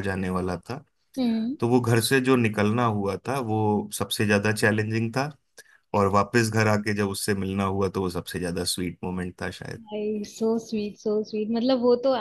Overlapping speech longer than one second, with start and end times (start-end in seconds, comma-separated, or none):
none